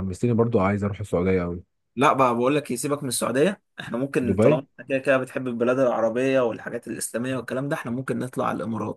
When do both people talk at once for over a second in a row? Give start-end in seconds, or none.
none